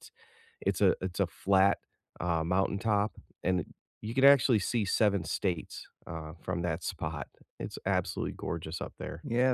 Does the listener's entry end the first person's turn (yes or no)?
yes